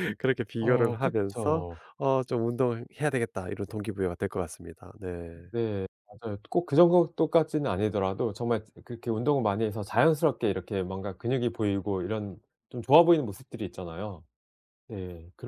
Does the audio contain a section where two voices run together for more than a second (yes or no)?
yes